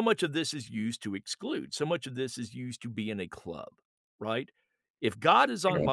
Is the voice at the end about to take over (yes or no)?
no